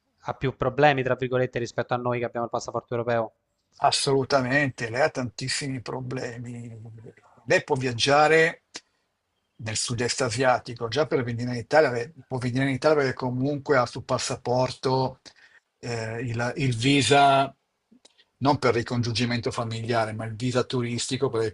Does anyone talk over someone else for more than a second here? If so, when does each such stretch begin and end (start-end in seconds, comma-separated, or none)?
none